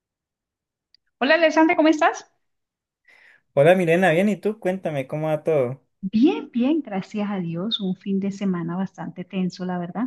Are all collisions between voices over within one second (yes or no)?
yes